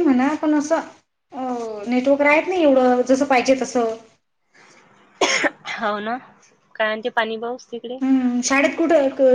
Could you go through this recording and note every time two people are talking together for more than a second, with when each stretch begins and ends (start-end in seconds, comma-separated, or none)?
none